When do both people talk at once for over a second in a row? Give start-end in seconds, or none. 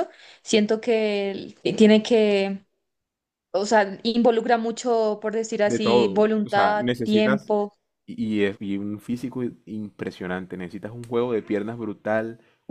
5.6-7.5